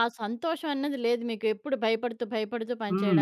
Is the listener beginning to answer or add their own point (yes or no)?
yes